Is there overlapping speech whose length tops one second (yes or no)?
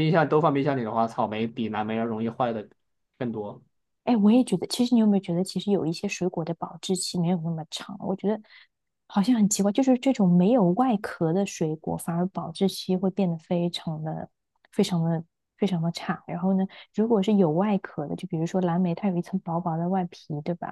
no